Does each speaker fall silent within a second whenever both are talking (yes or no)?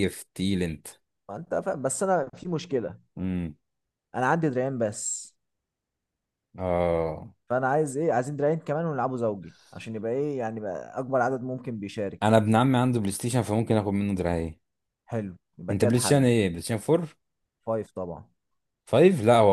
yes